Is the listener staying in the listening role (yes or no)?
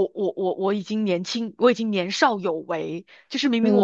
yes